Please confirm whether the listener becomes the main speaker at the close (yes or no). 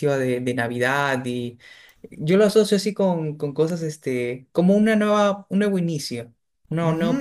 yes